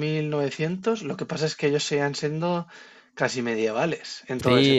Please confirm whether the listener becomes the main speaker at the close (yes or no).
yes